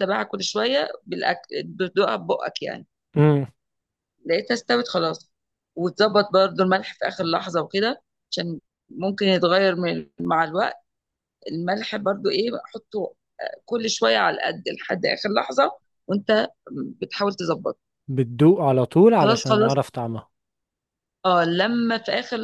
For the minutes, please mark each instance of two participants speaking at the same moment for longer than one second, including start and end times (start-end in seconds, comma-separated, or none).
none